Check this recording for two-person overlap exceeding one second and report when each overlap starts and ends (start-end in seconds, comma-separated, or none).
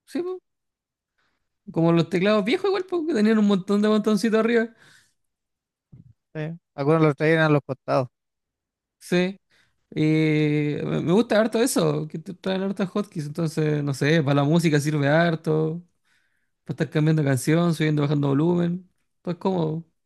none